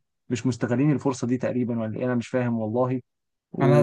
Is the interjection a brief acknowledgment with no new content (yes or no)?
no